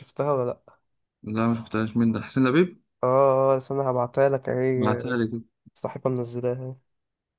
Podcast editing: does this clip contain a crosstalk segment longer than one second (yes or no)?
no